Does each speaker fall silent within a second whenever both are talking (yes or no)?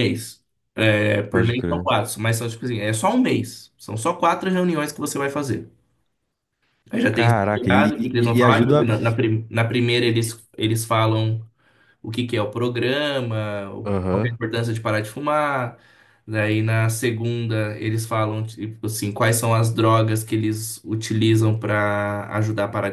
no